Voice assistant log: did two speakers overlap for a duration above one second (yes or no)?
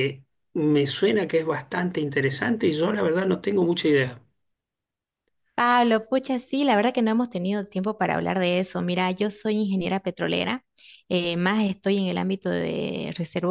no